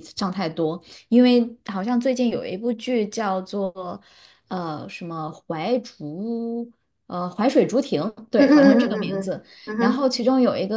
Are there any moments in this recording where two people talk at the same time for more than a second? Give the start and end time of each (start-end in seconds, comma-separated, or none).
8.3-10.1